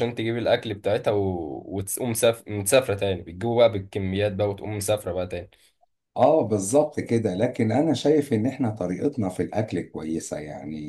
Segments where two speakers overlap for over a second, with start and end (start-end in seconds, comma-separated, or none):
none